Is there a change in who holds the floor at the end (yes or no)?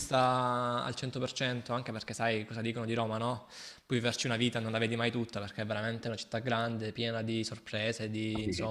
no